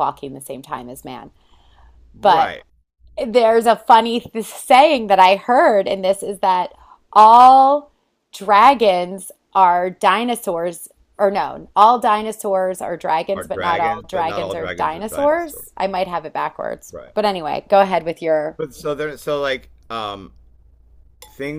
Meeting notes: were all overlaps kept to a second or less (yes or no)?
no